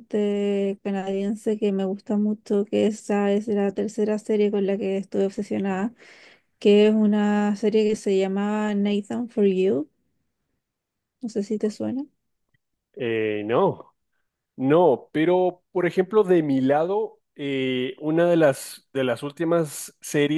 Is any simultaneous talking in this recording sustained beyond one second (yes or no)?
no